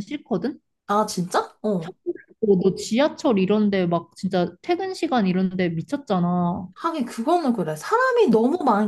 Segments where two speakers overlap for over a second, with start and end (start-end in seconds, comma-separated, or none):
none